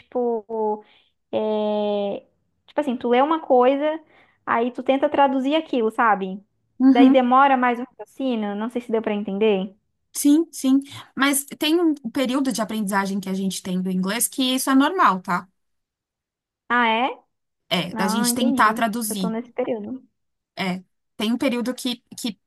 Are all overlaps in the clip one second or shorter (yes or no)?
no